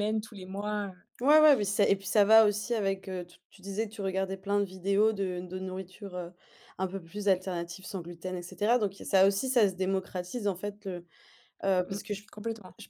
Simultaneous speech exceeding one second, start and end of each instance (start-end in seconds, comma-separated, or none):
none